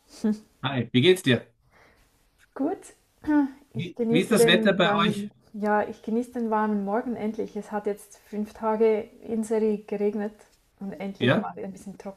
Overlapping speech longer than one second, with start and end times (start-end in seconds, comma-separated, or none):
3.8-5.3